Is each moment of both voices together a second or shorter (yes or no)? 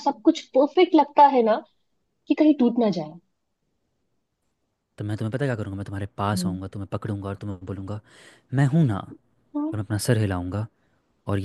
yes